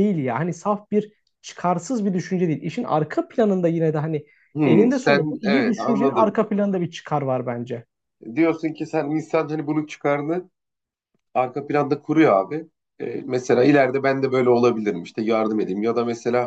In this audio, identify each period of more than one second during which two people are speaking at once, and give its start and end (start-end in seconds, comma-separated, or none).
4.6-6.4